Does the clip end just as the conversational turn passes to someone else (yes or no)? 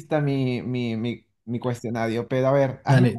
yes